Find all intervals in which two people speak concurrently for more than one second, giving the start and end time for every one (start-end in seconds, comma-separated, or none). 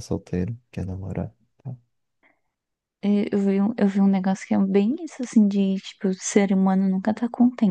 none